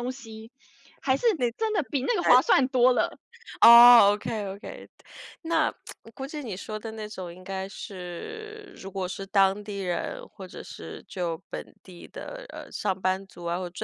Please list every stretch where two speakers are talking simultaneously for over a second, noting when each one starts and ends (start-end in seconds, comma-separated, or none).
none